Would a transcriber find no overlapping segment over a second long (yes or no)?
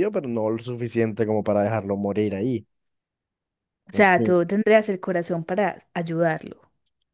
yes